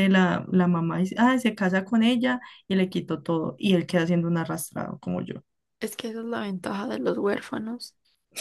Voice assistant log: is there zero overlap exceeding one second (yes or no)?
yes